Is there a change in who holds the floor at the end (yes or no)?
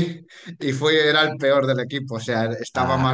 no